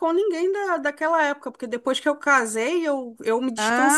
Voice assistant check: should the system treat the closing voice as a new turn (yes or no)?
yes